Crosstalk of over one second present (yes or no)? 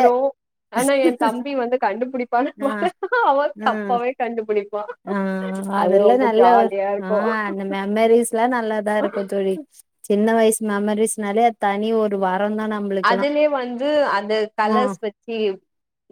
no